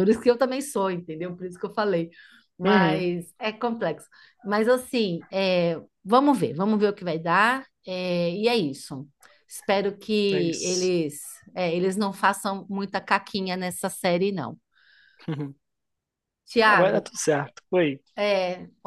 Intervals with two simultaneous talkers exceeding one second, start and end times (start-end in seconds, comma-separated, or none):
none